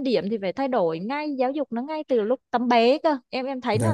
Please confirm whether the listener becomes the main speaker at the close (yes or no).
yes